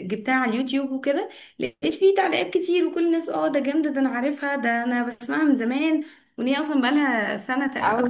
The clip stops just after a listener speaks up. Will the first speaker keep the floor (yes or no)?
no